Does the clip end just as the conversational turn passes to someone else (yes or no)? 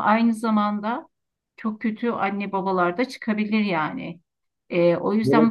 no